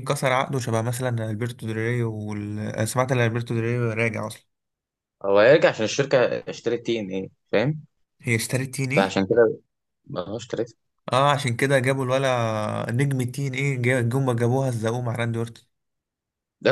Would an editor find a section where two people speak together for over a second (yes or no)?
no